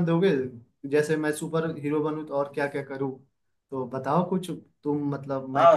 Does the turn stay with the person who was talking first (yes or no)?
no